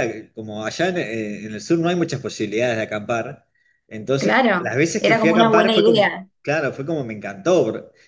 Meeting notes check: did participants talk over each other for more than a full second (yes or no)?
yes